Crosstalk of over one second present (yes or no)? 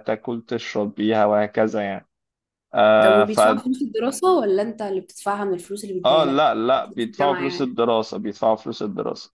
yes